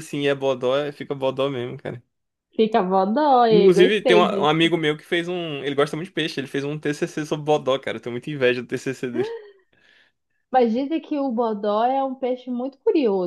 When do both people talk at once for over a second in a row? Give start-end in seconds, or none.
3.5-4.7